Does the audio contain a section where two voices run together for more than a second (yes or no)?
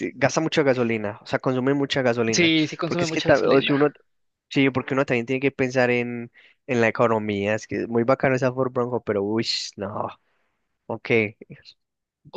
yes